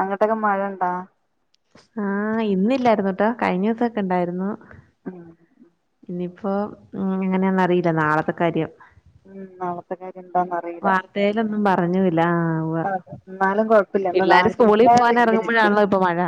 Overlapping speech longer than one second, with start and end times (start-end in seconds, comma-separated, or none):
14.1-15.7